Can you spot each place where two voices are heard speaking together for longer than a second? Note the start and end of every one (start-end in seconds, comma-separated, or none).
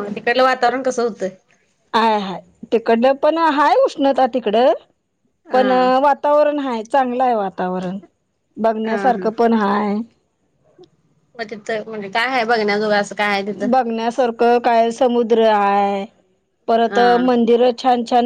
none